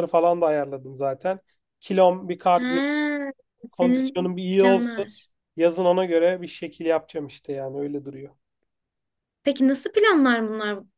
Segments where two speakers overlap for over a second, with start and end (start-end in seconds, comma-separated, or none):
3.7-5.0